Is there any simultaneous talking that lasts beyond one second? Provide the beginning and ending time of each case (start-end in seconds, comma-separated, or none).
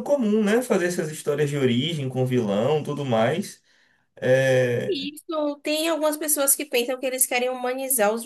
none